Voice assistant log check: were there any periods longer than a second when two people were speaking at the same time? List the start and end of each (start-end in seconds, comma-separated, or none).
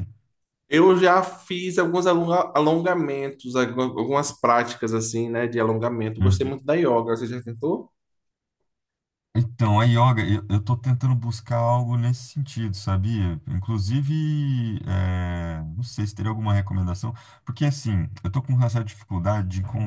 none